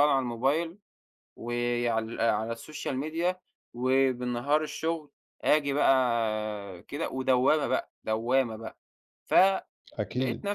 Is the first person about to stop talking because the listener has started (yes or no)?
no